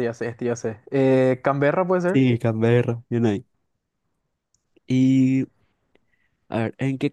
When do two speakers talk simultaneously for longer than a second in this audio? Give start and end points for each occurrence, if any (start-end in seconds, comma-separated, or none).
none